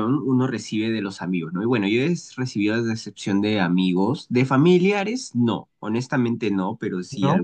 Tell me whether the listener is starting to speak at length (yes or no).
no